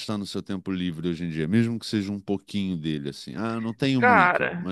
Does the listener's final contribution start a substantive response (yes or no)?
yes